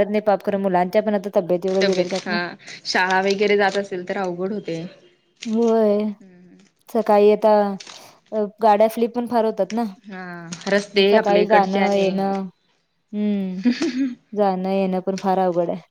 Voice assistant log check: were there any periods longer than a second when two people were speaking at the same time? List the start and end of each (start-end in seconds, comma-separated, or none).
10.9-12.3